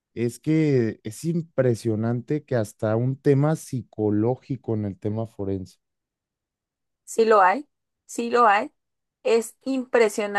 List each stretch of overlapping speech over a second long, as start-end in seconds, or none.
none